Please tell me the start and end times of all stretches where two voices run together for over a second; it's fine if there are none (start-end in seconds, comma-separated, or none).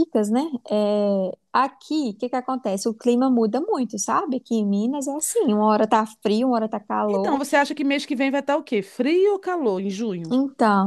none